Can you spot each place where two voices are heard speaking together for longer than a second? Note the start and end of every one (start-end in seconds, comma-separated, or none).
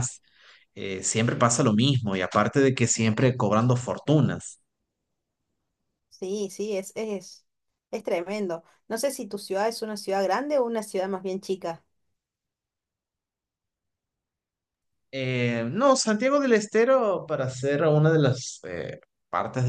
none